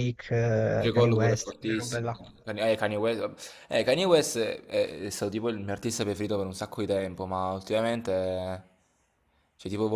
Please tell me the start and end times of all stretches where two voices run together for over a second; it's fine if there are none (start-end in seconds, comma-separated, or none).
0.8-2.1